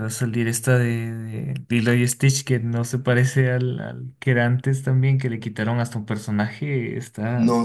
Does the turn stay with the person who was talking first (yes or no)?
no